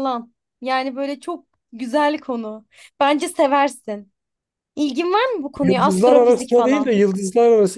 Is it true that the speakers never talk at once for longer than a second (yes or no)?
no